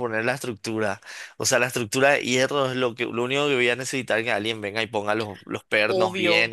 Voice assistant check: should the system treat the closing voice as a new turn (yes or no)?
yes